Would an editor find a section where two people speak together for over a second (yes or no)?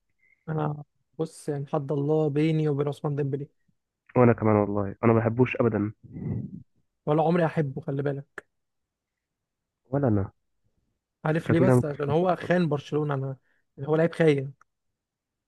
yes